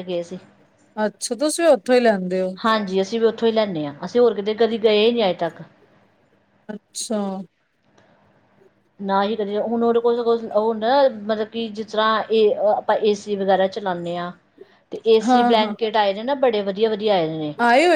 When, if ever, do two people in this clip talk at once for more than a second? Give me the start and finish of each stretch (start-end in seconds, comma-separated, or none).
none